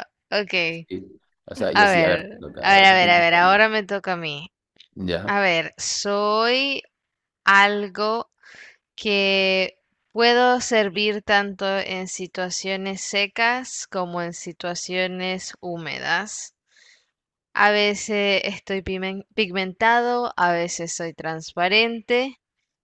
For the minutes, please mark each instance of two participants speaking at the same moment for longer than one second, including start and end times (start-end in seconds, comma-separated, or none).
1.7-3.6